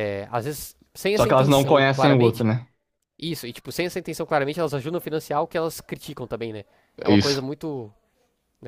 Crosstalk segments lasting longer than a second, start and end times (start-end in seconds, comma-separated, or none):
1.2-2.5